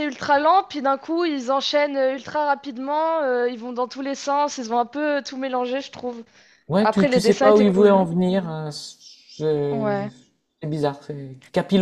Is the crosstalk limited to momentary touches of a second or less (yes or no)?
no